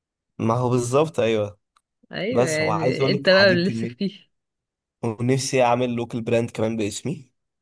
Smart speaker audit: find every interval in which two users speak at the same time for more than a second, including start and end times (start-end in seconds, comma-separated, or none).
2.3-4.0